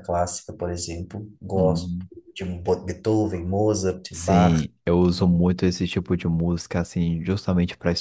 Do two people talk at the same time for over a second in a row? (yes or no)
no